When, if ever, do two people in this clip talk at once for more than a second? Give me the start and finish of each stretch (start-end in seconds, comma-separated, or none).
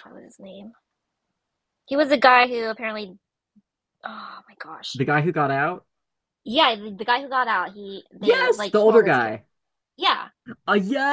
8.2-9.4